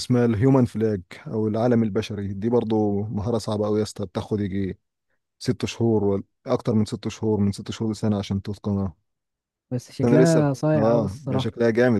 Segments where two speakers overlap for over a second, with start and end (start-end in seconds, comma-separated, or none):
10.0-11.5